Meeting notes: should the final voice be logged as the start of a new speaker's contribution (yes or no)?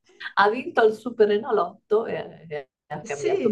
yes